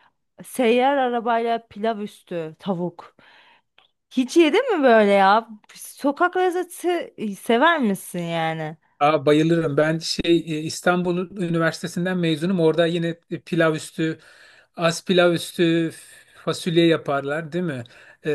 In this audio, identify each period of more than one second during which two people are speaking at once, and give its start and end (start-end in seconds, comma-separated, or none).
none